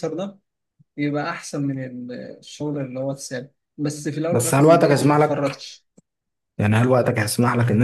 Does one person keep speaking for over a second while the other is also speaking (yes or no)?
yes